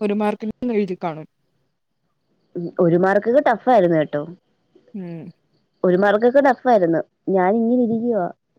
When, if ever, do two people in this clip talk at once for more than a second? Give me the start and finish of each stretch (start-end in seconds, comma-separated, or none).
none